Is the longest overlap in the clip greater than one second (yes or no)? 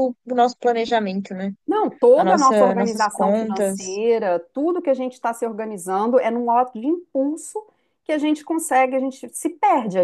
yes